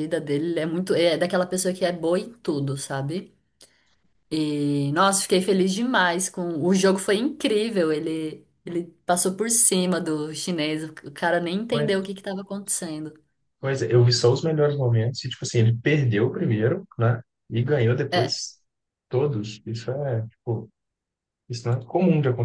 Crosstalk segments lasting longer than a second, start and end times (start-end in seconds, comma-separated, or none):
none